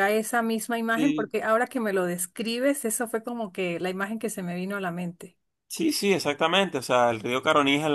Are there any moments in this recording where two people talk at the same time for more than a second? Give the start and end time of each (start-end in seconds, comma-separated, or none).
none